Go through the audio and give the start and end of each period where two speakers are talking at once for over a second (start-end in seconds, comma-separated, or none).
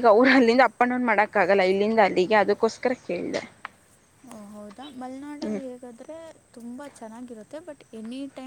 none